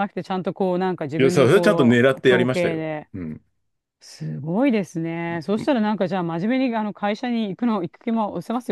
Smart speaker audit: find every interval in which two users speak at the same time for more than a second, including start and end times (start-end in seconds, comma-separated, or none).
1.2-3.1